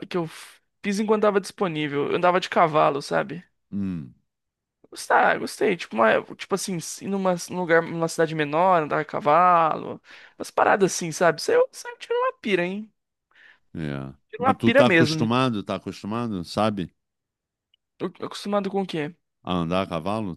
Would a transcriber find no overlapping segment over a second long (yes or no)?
no